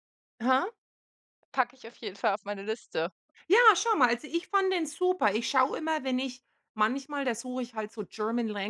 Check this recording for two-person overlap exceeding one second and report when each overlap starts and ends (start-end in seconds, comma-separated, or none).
none